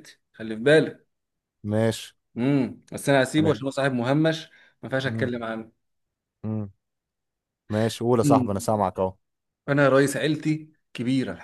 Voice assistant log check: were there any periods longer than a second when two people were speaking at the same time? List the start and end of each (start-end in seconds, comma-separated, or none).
none